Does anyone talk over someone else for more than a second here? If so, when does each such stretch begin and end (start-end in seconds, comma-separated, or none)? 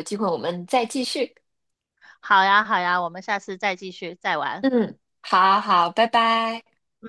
none